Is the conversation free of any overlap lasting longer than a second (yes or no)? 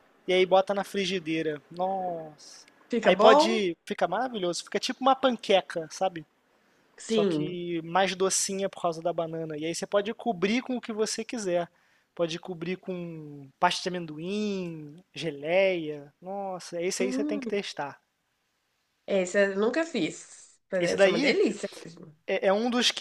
yes